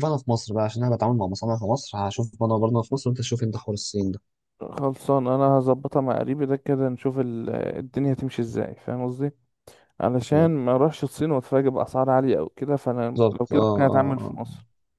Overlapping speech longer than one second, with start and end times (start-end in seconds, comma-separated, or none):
13.2-14.4